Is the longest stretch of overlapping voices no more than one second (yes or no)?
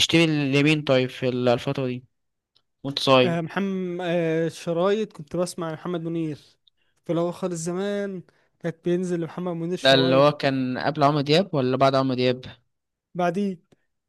yes